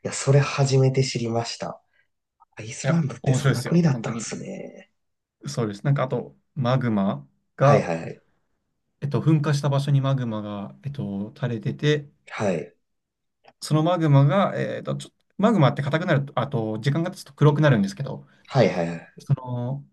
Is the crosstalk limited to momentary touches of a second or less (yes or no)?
no